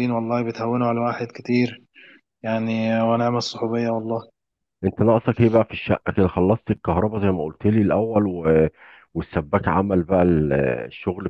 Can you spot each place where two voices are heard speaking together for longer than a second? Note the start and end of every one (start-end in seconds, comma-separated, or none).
none